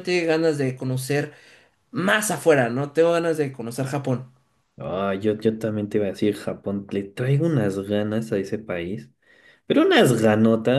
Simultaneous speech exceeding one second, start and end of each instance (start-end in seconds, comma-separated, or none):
none